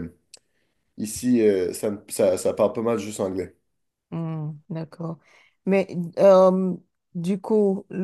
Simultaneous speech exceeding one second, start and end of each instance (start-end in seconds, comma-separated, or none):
none